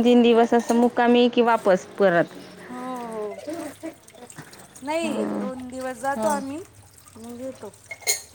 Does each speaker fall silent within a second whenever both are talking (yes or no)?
yes